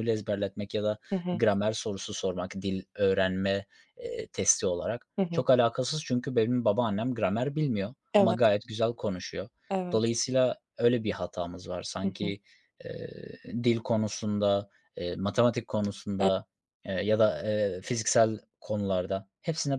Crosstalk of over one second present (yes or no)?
no